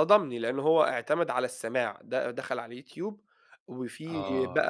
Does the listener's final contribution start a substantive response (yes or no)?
no